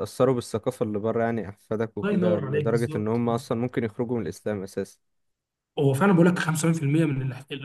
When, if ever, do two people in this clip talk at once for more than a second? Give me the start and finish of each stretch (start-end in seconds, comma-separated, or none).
2.0-3.5